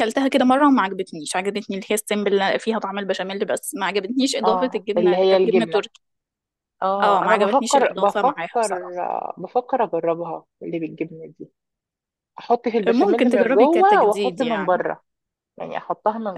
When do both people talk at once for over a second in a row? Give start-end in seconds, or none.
4.4-5.8, 7.0-9.0, 12.9-14.8